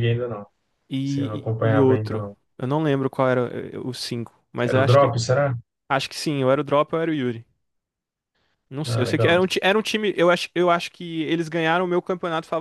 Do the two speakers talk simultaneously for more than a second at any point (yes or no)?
yes